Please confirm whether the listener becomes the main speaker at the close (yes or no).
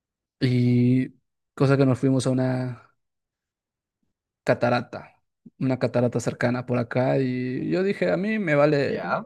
no